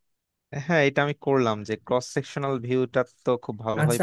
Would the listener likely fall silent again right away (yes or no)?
no